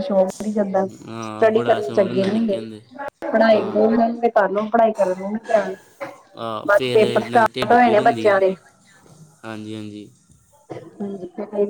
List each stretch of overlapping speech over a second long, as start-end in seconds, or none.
1.2-2.6, 6.7-8.3